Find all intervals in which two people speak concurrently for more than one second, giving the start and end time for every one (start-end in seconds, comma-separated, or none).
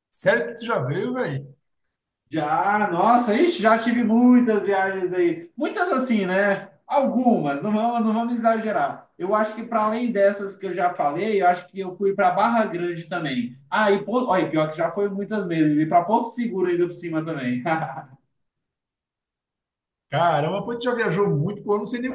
none